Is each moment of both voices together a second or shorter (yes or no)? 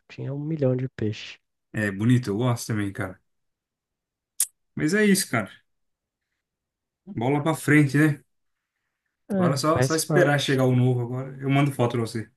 no